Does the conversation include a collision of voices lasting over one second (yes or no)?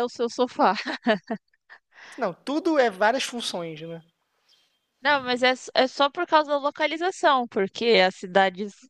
no